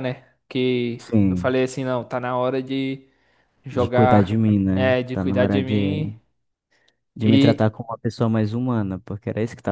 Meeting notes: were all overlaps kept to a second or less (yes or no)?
no